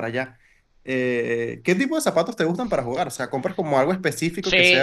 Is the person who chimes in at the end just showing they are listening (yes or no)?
no